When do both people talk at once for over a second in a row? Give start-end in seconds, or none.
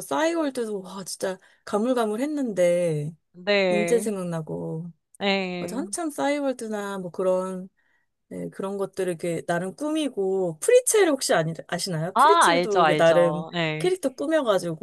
12.1-13.9